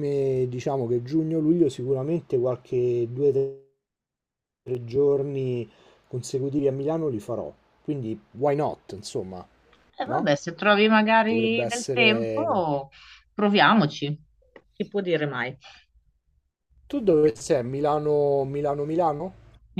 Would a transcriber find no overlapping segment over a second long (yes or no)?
no